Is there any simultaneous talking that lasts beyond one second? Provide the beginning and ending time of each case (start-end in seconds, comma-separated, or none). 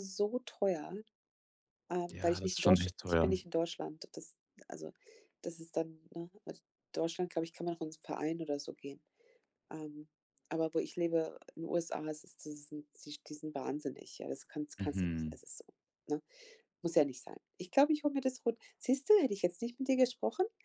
2.1-3.4